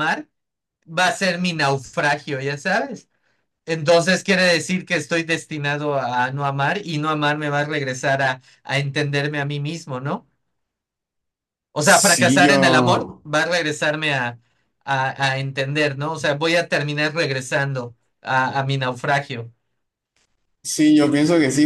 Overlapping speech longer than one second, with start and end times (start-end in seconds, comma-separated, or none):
11.8-13.2